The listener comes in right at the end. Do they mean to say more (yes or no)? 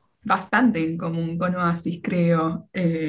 no